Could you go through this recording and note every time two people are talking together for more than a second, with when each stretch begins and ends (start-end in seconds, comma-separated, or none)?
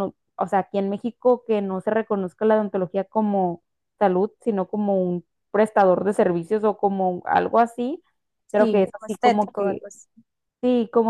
8.6-9.8